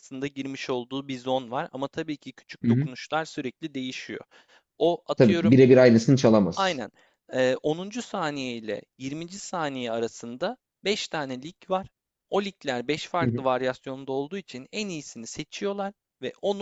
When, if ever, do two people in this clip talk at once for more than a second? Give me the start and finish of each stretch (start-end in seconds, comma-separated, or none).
none